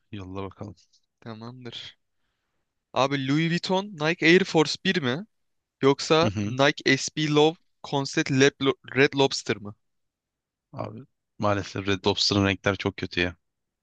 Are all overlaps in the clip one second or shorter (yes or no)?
yes